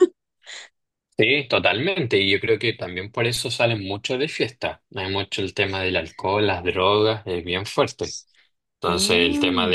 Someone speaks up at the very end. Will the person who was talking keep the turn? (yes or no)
yes